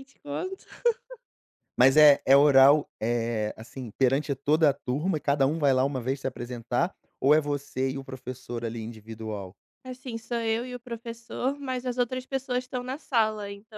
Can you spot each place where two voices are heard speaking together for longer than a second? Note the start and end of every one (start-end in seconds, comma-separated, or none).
none